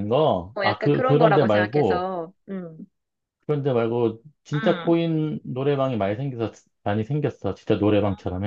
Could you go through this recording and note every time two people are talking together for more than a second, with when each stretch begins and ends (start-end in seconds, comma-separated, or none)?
0.6-2.1